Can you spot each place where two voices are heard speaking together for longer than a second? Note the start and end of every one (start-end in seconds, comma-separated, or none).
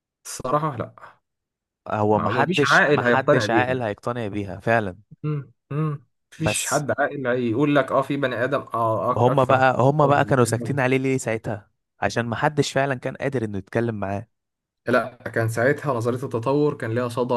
2.1-3.9, 9.2-10.8